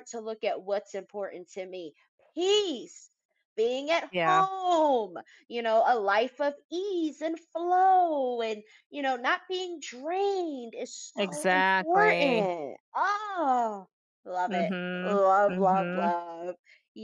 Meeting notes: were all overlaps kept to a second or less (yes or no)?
no